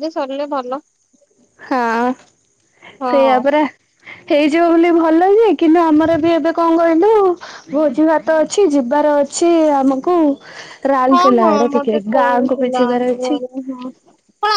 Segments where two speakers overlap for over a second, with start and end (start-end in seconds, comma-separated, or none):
11.1-13.4